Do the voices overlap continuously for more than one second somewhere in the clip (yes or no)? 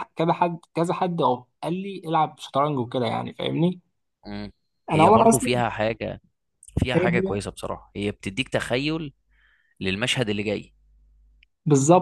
no